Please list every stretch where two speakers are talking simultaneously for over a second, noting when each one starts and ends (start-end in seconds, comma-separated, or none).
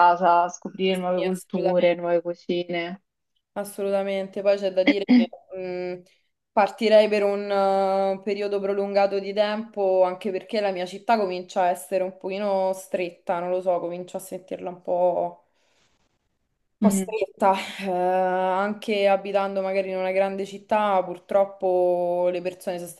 0.8-2.0